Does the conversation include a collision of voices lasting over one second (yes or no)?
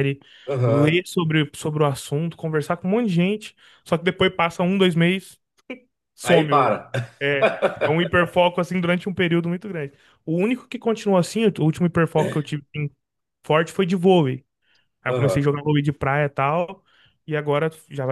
no